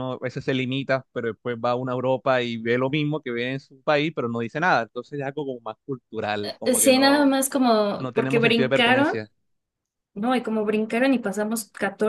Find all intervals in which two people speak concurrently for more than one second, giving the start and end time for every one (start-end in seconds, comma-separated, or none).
8.0-9.2